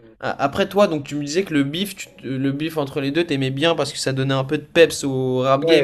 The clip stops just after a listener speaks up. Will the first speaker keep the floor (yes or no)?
no